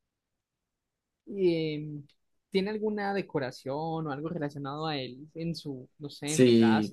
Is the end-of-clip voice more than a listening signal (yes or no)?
yes